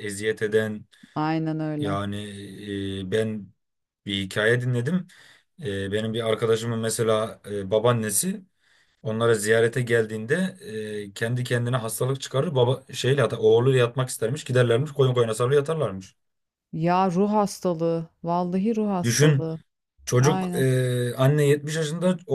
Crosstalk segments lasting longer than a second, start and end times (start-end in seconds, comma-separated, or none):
none